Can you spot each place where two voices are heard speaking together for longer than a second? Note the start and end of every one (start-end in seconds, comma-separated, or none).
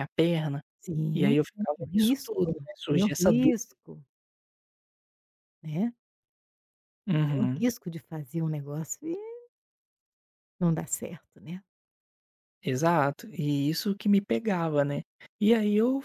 1.1-3.5